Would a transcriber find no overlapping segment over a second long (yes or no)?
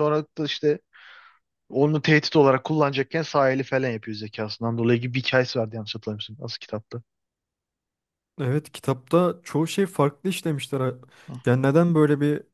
yes